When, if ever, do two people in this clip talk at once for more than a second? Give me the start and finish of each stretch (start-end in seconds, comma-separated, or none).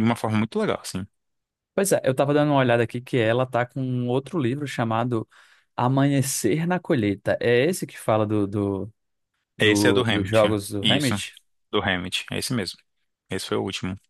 9.6-11.2